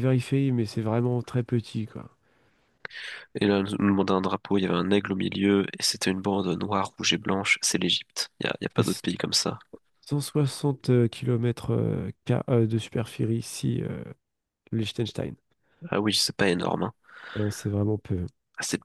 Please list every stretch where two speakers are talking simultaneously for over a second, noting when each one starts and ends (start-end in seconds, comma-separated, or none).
none